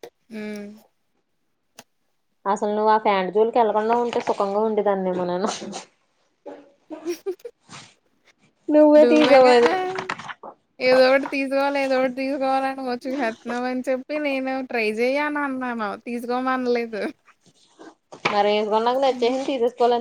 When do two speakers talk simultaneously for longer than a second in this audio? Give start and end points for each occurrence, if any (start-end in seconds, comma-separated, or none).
none